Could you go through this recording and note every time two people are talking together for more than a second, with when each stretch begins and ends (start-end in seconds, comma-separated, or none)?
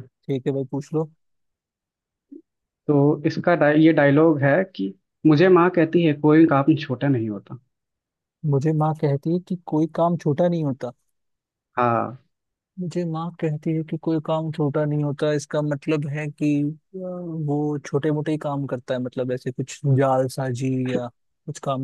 none